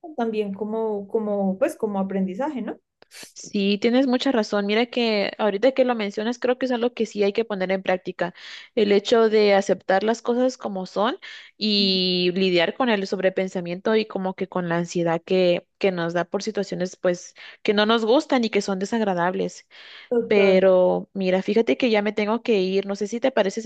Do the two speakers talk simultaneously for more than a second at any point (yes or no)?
no